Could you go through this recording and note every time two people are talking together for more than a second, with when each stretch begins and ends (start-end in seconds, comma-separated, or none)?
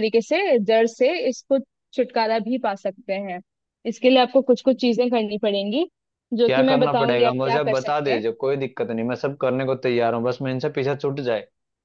6.5-8.2